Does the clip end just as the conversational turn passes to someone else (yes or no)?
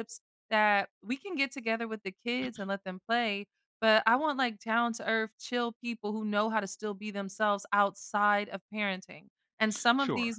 no